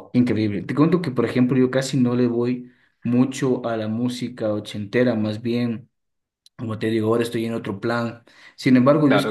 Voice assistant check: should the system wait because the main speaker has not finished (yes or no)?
yes